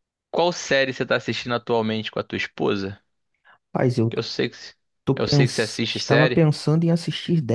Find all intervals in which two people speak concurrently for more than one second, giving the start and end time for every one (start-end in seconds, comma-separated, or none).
5.2-6.5